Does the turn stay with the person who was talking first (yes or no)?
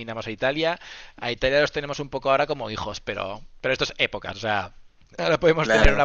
yes